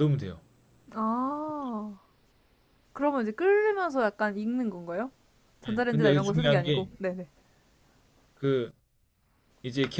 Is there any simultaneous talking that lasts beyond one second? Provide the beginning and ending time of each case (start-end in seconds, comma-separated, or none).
5.7-6.9